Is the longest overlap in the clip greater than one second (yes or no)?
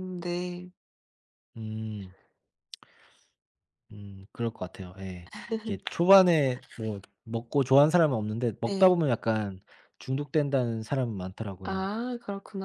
no